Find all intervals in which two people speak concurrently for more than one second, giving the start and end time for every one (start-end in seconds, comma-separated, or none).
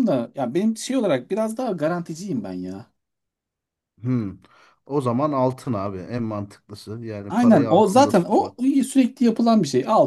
7.3-8.6